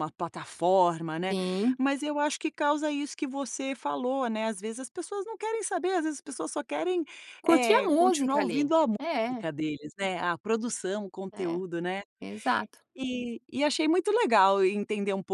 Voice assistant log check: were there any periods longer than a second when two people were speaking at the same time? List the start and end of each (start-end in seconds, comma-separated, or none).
7.5-9.4